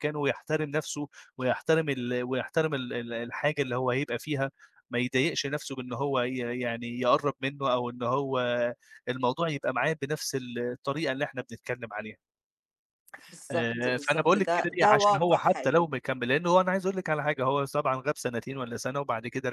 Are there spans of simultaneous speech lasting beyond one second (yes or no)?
yes